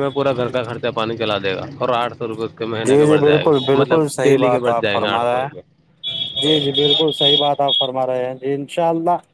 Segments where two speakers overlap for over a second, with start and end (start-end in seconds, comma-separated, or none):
2.9-5.6